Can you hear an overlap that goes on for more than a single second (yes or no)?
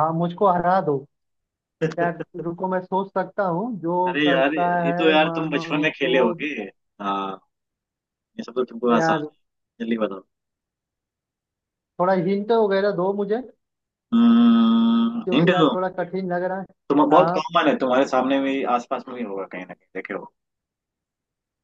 yes